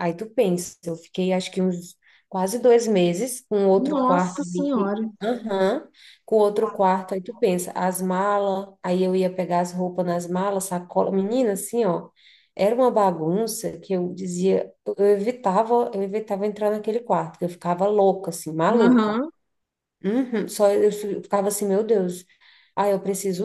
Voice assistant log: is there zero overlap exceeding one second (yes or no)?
no